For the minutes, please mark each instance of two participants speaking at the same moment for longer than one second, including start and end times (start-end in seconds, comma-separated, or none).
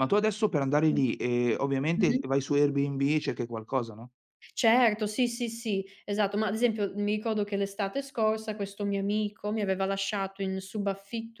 none